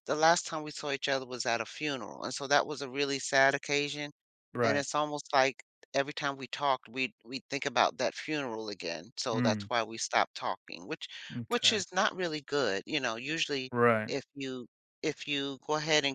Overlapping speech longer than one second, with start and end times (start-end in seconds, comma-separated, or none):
none